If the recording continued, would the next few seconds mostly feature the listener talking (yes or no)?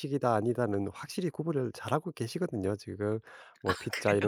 no